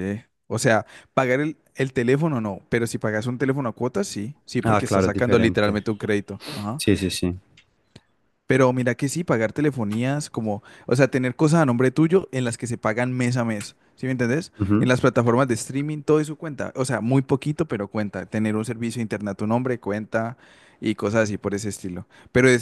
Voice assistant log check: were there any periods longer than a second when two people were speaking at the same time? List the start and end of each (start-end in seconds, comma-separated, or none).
4.6-5.8